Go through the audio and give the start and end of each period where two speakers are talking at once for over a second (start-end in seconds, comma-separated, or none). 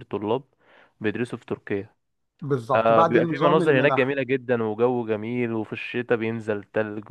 2.7-4.2